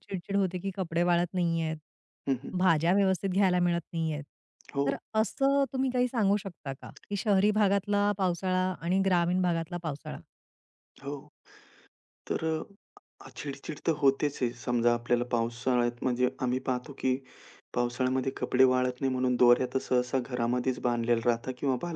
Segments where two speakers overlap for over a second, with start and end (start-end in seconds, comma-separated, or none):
none